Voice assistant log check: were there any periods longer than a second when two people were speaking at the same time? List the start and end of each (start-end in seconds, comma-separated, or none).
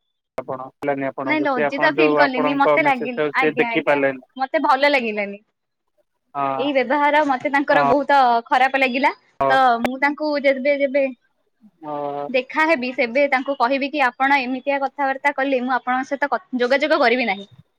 1.3-4.0